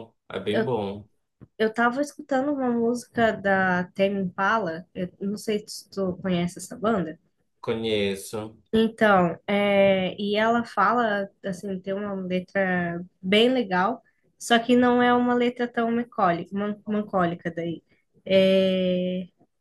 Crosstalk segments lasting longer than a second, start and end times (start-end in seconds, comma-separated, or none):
none